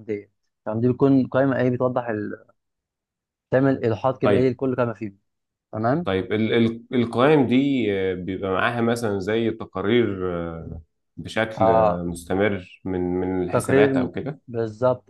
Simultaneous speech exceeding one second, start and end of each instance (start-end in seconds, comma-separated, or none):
none